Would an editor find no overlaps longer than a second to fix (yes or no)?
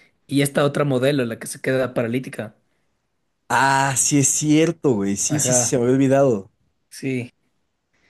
yes